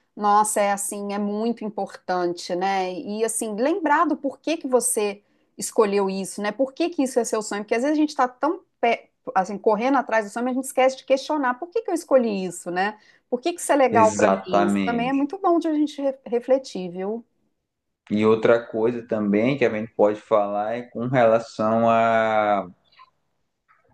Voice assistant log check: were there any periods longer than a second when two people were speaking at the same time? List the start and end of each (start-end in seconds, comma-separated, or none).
13.9-15.3